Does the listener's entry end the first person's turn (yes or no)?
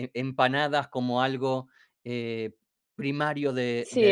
yes